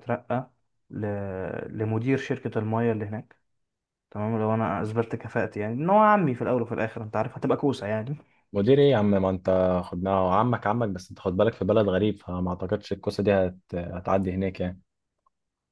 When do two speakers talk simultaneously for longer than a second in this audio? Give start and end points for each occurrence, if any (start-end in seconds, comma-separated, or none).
none